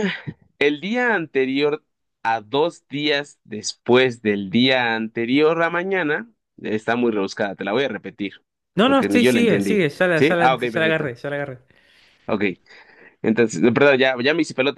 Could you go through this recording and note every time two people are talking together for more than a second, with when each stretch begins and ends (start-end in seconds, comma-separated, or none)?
8.8-11.1